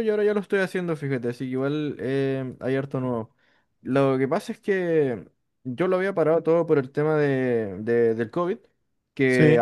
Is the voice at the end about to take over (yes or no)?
no